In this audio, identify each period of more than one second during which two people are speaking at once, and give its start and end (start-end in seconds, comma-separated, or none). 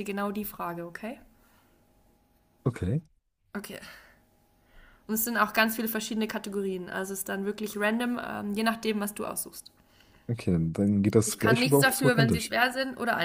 11.2-12.5